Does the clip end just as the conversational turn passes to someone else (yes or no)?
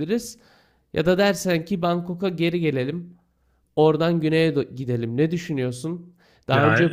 no